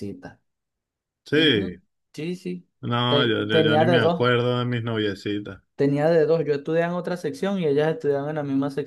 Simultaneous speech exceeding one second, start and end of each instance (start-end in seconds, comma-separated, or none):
3.1-4.3